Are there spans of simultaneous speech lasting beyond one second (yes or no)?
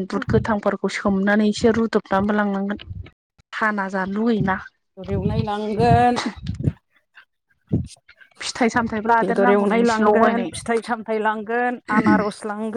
yes